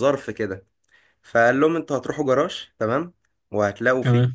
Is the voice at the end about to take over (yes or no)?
no